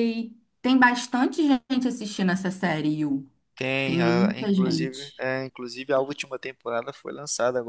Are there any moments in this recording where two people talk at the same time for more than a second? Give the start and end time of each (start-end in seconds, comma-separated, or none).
3.8-5.3